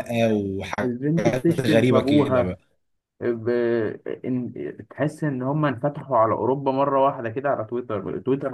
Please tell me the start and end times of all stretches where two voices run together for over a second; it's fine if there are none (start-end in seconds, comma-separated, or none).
0.8-2.6